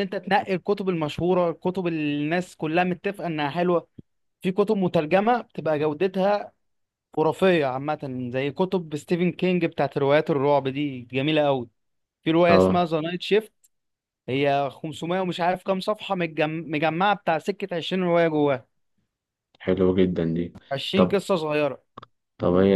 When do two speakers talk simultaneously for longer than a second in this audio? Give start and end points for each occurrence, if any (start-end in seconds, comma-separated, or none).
none